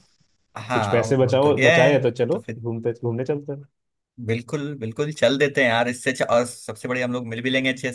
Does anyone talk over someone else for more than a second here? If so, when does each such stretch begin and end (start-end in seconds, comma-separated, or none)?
0.7-2.6